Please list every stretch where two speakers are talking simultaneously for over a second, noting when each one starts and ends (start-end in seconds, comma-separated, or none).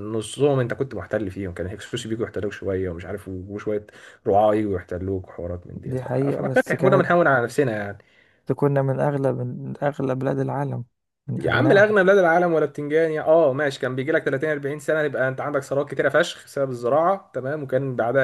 5.9-7.1